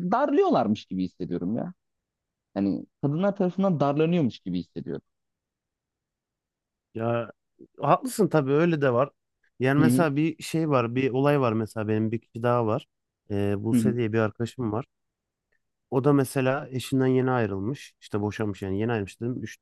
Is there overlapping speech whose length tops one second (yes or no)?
no